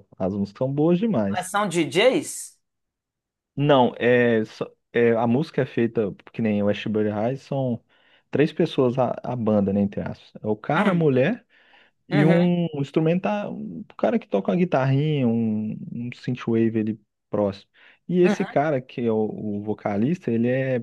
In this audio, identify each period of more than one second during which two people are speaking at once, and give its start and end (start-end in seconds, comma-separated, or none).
none